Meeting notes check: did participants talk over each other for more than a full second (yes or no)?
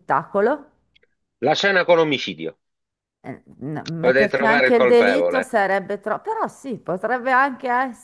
yes